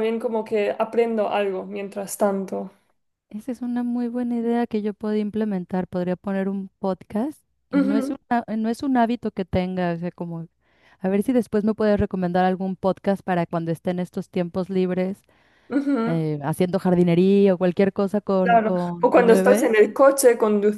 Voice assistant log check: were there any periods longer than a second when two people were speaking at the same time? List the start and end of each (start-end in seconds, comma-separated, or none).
18.4-19.7